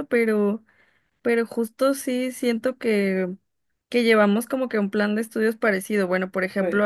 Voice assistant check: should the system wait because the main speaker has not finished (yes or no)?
yes